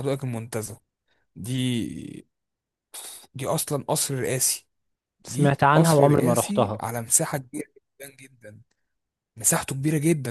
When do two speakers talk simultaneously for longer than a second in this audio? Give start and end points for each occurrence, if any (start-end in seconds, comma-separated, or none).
5.2-6.8